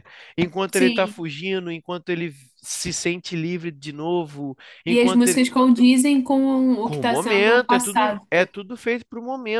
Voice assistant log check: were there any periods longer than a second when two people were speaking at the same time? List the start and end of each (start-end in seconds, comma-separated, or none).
6.8-8.3